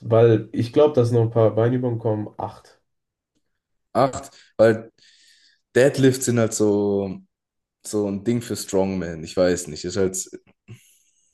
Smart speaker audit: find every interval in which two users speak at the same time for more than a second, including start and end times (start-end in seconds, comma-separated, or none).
none